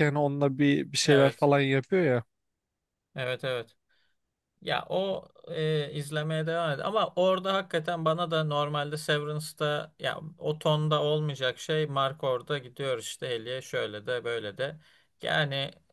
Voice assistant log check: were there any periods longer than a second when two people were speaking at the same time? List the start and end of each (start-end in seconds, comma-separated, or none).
none